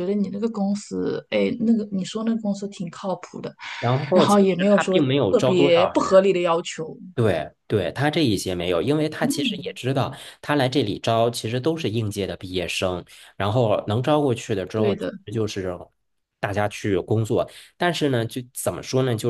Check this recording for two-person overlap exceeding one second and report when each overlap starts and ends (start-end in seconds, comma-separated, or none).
4.1-6.1